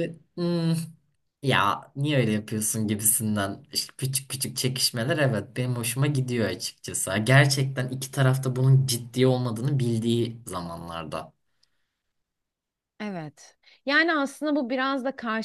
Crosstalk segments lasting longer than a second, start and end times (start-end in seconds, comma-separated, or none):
none